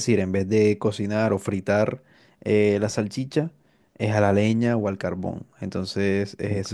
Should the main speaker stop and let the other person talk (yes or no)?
no